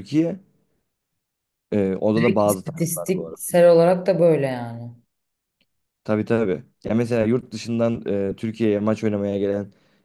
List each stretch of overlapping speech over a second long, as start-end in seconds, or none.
2.2-3.4